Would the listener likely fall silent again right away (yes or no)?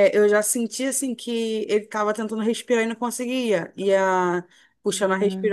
yes